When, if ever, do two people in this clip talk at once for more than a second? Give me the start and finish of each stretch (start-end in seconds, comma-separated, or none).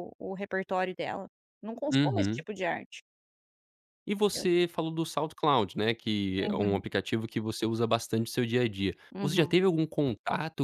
none